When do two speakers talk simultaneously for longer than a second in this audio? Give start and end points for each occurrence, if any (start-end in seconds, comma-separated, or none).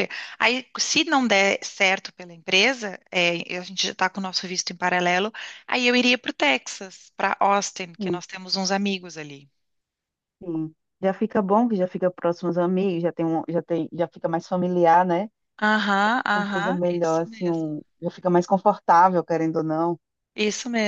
16.3-17.7